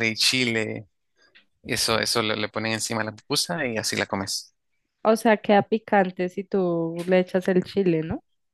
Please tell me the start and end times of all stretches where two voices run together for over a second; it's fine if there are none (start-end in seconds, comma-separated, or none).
none